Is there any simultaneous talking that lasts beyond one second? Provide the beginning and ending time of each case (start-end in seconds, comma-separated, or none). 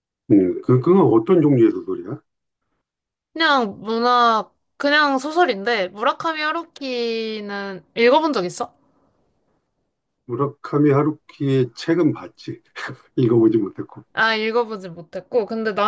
none